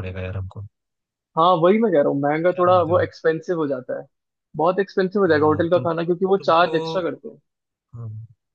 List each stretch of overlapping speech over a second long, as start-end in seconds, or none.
5.2-7.0